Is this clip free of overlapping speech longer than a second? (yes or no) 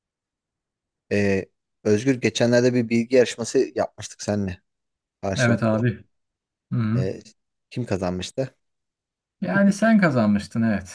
yes